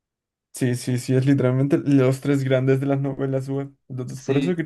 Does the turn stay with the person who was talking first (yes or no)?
no